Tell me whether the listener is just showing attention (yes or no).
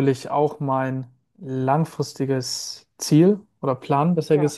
yes